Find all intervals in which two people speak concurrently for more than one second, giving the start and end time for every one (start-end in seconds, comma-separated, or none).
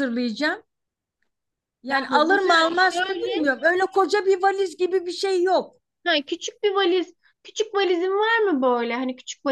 1.9-3.5